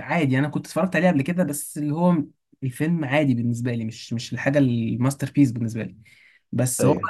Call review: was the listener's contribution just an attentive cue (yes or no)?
yes